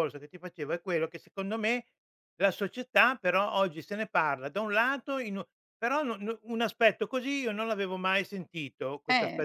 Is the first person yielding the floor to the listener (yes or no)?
no